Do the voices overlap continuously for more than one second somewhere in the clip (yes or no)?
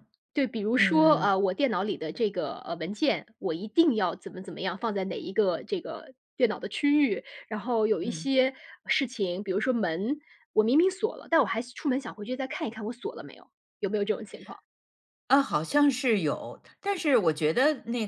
no